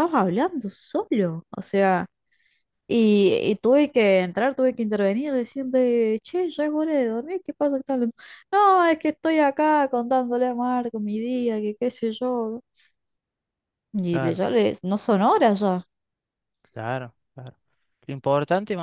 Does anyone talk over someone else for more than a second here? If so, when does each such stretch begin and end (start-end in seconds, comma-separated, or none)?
none